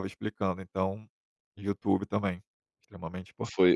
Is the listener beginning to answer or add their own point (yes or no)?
yes